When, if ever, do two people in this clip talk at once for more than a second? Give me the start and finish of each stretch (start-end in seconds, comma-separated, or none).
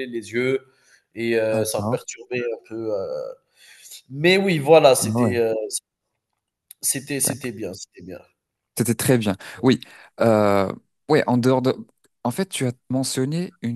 none